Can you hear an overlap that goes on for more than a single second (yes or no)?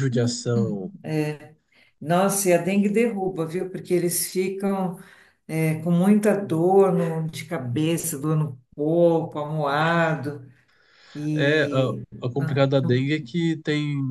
yes